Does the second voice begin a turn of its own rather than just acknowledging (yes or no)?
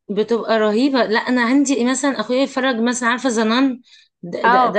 yes